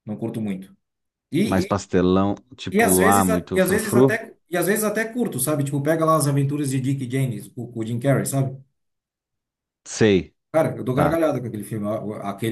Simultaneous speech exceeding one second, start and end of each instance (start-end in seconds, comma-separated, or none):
2.8-4.2